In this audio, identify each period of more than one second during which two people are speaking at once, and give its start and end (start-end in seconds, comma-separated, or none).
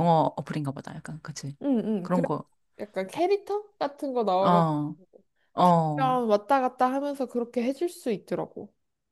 none